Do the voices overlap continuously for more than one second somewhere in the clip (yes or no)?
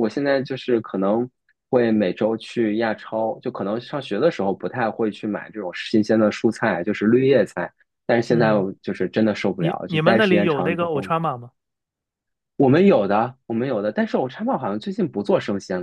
yes